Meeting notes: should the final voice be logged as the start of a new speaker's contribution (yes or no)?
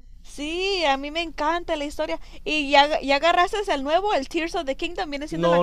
yes